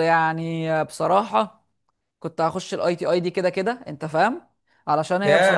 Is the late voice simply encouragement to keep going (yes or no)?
yes